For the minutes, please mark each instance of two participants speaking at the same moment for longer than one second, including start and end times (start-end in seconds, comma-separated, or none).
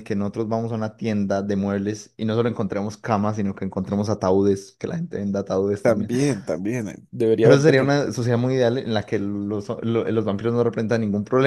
none